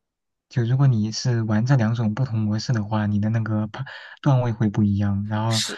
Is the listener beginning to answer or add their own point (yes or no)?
no